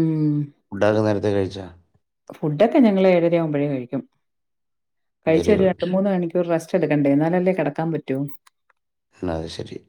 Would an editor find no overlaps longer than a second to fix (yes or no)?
yes